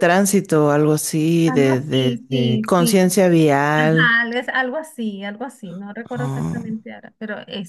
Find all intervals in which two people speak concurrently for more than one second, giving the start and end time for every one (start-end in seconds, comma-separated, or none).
1.4-3.0